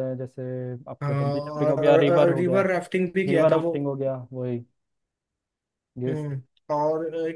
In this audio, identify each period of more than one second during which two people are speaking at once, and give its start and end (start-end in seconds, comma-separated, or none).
1.0-2.6